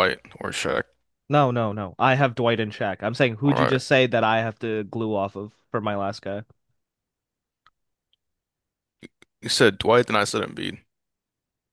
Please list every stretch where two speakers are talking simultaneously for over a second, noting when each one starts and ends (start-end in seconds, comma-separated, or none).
none